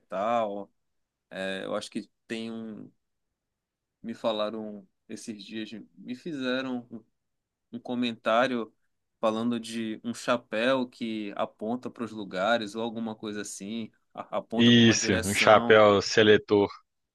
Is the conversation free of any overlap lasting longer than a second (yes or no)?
no